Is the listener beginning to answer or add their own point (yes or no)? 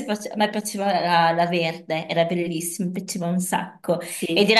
no